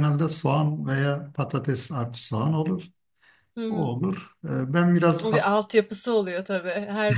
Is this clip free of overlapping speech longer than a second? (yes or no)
yes